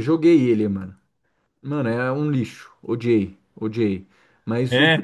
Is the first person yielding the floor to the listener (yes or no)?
no